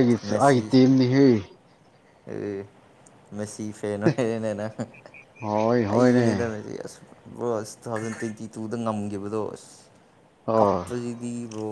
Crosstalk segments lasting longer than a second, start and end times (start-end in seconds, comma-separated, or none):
none